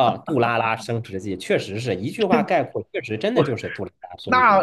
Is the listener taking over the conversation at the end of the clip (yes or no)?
yes